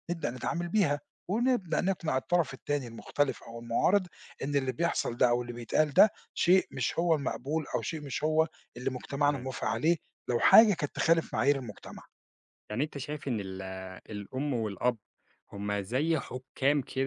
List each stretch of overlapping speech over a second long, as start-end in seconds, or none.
none